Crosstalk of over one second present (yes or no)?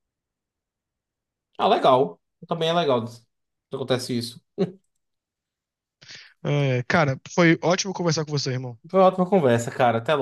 no